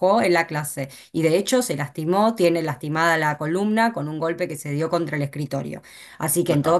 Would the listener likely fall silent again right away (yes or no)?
yes